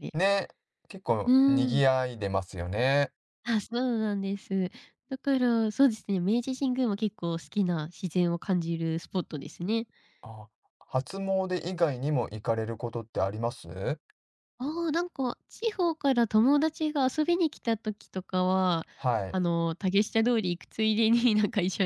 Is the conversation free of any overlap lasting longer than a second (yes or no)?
yes